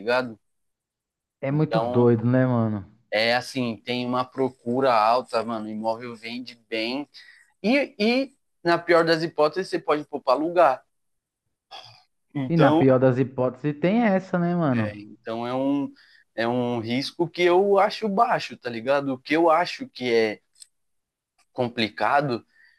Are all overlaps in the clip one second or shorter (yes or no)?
yes